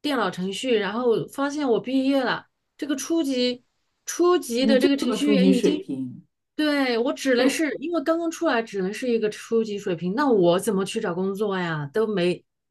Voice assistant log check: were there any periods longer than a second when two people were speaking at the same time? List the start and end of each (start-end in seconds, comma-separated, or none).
4.6-5.9